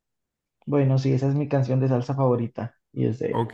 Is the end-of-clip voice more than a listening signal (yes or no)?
yes